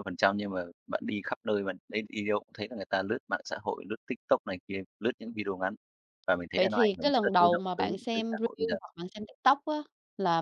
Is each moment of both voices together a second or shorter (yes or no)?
no